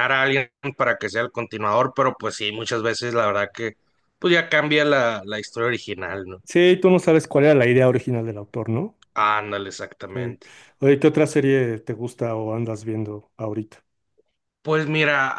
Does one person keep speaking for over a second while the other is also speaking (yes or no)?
no